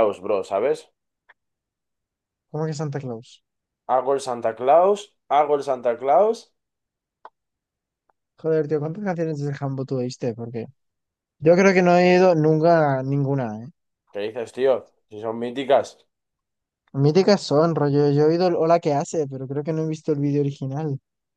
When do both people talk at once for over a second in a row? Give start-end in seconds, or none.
none